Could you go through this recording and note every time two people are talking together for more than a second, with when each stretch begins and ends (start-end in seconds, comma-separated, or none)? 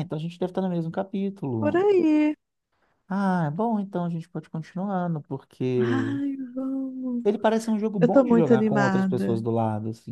8.0-9.4